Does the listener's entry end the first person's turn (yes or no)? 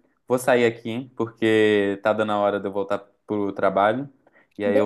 no